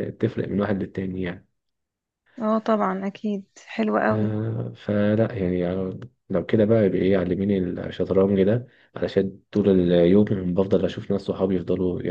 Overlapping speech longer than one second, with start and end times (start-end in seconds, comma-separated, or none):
none